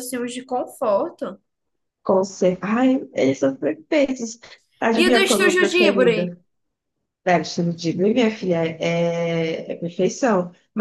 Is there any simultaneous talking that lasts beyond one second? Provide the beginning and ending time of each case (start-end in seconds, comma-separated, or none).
5.0-6.2